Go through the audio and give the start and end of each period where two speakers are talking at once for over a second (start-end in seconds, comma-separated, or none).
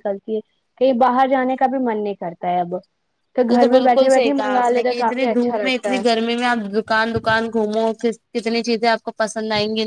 3.5-6.0